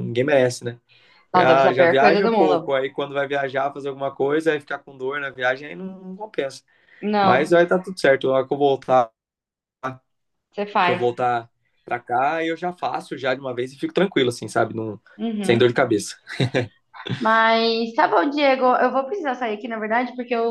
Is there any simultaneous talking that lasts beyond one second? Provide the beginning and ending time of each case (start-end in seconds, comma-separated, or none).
1.4-2.7